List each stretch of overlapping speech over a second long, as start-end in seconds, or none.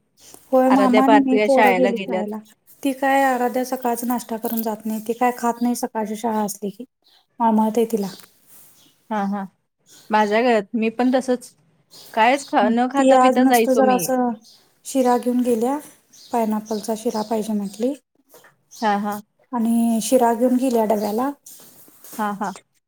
0.7-2.2